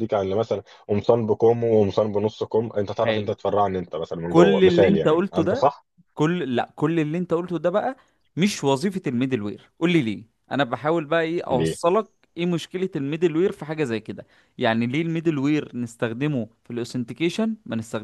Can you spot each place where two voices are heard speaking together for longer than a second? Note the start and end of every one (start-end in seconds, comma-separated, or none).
4.3-5.6